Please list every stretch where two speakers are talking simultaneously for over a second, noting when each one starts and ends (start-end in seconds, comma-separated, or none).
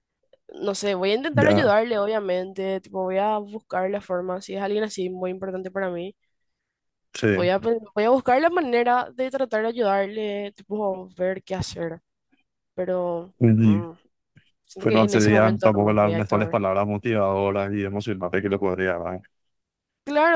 14.8-16.6